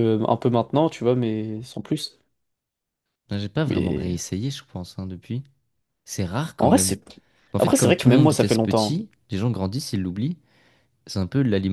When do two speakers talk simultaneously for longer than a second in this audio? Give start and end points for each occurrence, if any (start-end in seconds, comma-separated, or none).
7.6-9.0